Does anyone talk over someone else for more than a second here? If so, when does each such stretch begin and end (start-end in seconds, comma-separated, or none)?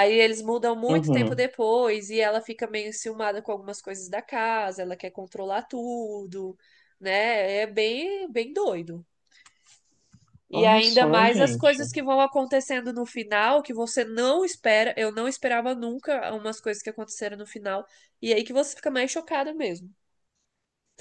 10.5-11.9